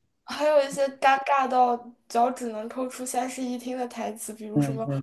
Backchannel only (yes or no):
yes